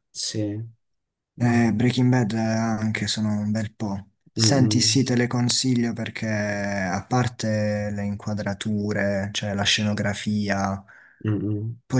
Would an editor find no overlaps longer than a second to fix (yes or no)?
yes